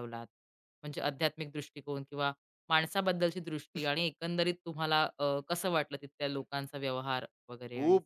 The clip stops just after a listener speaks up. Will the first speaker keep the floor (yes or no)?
no